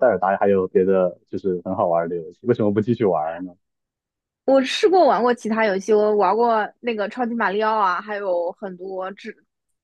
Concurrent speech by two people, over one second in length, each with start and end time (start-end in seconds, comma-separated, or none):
none